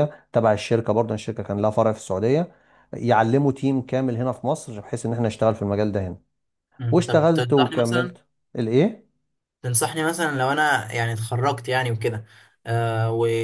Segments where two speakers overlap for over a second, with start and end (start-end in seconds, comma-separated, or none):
6.9-8.2